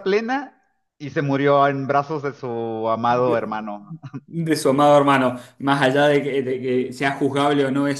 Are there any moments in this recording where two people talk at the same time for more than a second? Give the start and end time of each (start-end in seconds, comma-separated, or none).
none